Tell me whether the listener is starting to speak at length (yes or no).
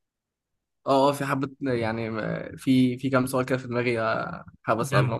yes